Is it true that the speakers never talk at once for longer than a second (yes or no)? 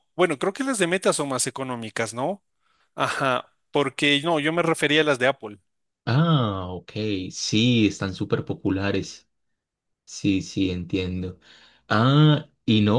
yes